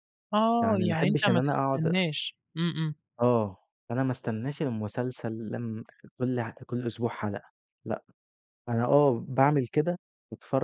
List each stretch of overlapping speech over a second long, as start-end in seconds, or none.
0.6-1.9